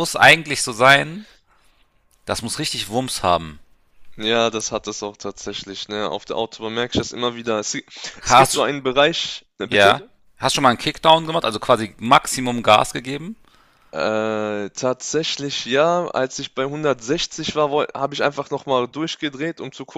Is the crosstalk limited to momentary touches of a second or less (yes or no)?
yes